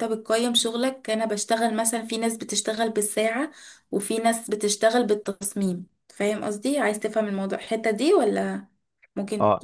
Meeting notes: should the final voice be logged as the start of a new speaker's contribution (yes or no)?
yes